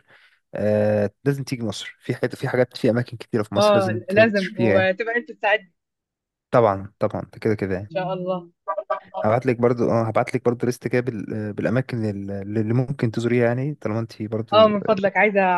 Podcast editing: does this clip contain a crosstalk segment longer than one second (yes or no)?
yes